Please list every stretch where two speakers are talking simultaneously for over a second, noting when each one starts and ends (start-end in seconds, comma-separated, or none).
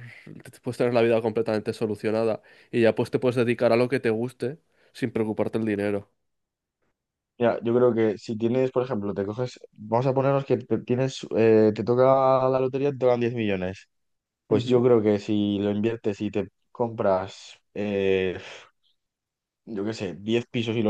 none